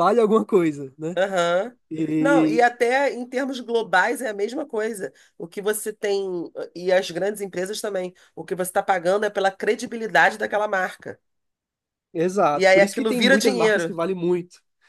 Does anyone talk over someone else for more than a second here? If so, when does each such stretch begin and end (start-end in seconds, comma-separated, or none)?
12.5-14.0